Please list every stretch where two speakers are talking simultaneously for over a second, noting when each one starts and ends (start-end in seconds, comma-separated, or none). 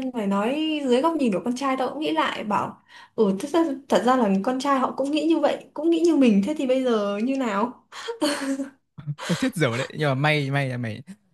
none